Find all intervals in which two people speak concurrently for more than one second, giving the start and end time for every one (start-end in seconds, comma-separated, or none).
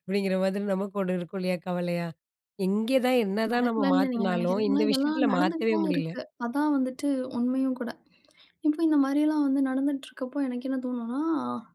3.5-6.1